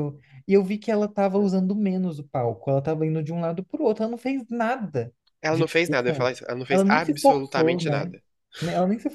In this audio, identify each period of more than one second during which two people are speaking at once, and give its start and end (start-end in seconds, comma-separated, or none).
5.5-8.1